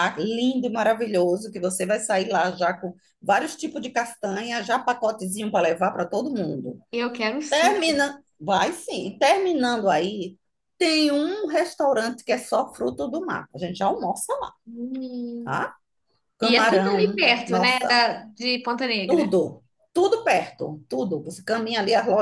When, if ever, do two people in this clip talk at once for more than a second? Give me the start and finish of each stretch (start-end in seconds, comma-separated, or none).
16.4-18.0